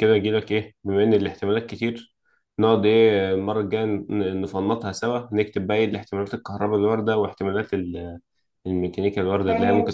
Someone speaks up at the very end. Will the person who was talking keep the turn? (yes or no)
no